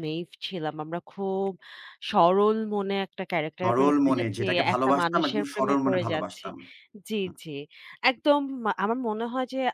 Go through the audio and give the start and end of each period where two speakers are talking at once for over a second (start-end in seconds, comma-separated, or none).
3.6-6.5